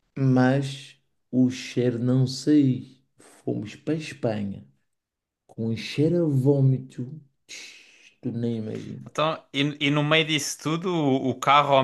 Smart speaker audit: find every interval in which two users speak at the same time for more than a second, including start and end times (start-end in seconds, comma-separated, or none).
none